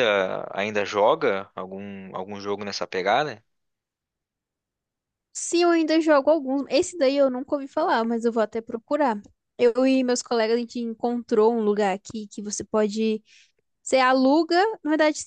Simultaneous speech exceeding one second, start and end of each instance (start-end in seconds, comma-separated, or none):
none